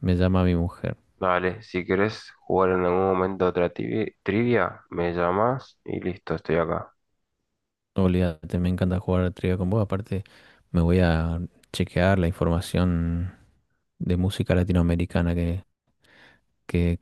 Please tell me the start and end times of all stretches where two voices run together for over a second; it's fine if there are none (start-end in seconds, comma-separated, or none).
none